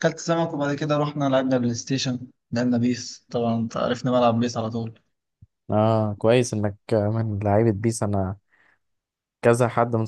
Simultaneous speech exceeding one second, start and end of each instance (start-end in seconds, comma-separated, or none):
none